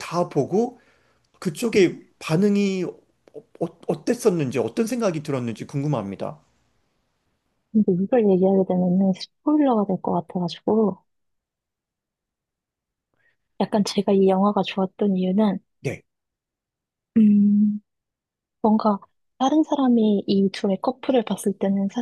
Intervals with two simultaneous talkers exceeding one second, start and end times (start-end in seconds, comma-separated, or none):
none